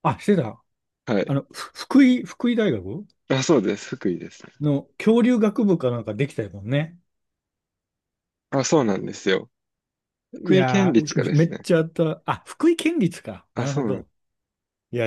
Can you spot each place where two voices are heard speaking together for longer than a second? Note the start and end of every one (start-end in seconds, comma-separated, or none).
10.3-11.7